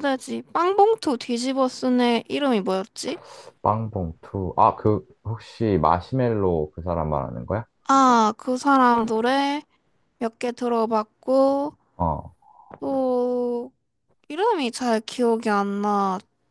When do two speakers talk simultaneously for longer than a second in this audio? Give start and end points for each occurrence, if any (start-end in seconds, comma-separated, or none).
none